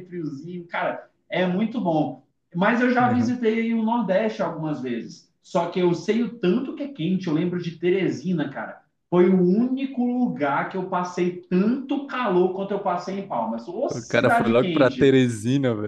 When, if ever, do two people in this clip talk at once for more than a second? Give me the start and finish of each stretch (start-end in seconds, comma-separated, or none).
13.9-15.2